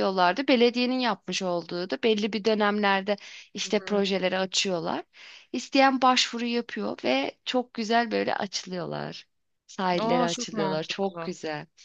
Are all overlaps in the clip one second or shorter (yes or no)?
no